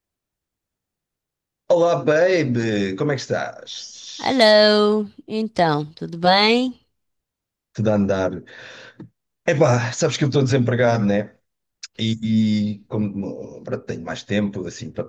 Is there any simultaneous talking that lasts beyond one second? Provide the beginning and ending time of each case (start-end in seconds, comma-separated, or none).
none